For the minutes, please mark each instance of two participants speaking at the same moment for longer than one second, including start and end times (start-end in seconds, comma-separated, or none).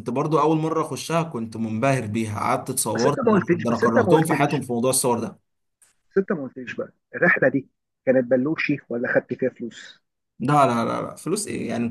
2.9-4.6